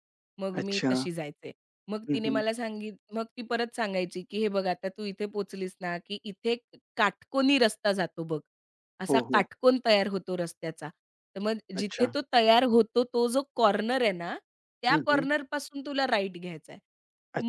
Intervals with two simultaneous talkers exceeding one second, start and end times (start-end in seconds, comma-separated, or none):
none